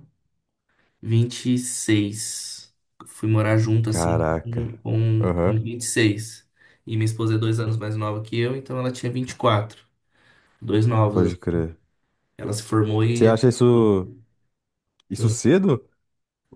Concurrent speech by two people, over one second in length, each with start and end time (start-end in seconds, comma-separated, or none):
none